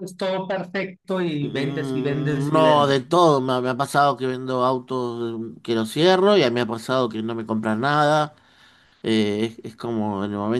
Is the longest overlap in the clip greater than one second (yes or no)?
yes